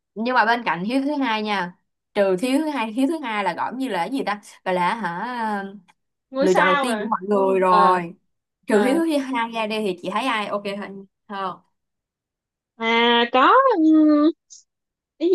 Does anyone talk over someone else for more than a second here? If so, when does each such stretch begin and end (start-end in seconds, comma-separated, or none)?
6.4-8.0